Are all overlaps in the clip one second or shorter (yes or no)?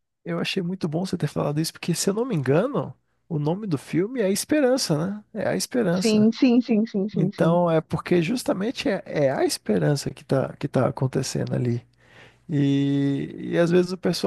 yes